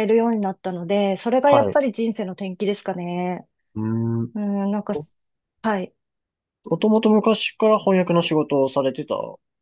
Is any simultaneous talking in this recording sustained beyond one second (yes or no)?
no